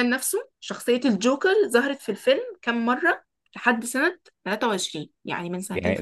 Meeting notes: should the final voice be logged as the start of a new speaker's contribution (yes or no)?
yes